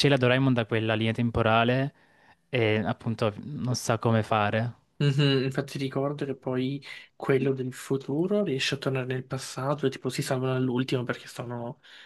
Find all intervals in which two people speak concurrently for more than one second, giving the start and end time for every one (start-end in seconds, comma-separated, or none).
none